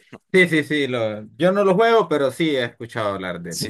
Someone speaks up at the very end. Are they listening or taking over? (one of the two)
taking over